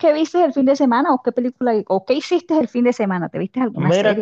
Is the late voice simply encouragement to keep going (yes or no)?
no